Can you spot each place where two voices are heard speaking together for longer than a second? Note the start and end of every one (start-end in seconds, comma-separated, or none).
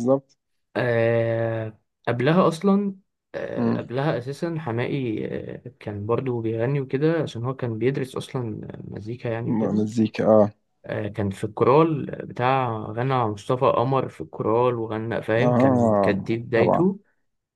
15.4-16.9